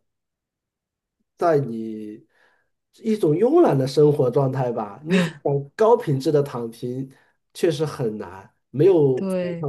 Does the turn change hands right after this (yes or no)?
no